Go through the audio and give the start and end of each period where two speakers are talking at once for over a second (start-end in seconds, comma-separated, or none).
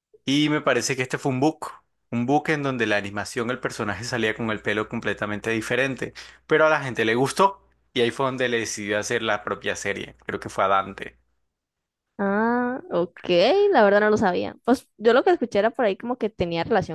none